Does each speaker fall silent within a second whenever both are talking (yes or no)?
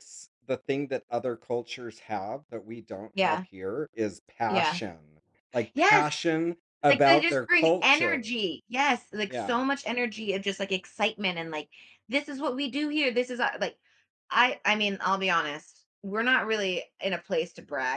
no